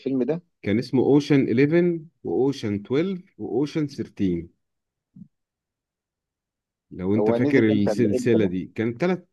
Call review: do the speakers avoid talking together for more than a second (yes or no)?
no